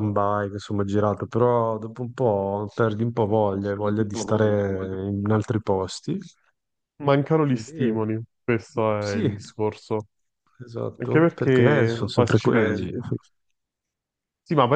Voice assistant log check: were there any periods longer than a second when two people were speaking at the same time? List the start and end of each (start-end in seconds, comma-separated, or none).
11.0-12.9